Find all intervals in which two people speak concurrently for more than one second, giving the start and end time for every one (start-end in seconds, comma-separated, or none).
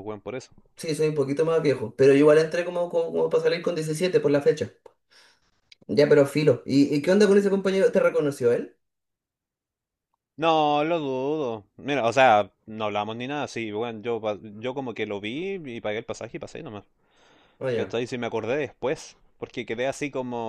none